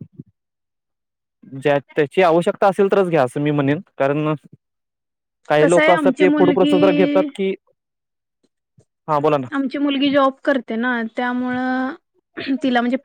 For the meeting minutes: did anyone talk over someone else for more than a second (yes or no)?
yes